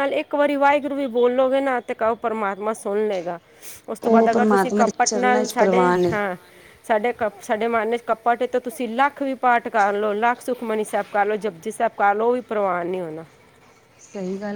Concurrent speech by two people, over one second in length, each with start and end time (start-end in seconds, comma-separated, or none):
4.1-6.1